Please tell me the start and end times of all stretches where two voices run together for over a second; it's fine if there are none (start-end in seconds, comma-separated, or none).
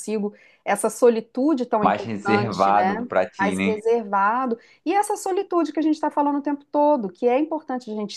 1.8-3.7